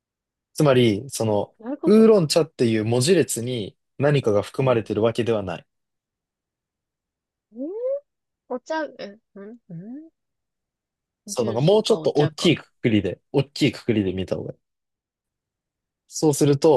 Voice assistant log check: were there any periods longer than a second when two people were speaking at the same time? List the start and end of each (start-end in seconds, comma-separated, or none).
11.3-12.5